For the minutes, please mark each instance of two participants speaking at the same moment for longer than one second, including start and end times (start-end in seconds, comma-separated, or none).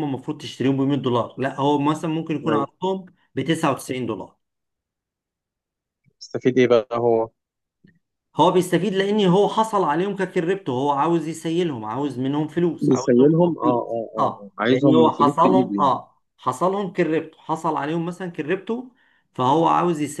12.8-15.9